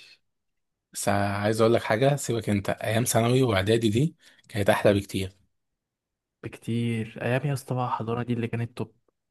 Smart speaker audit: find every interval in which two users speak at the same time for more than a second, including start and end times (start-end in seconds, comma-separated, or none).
none